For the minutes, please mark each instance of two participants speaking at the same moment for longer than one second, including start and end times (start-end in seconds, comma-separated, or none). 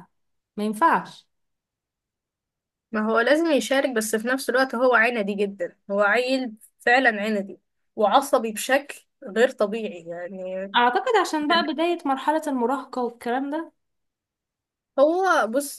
none